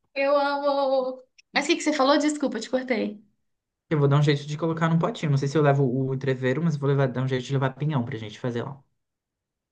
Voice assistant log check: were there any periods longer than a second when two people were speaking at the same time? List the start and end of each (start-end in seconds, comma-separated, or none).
none